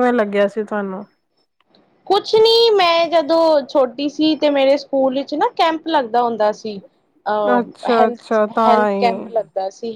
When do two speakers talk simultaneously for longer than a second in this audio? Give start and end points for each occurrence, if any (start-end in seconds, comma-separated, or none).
7.6-9.4